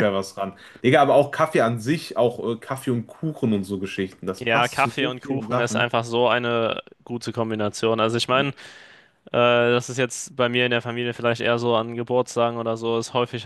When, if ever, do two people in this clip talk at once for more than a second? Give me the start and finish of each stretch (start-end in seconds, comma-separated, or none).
4.4-5.9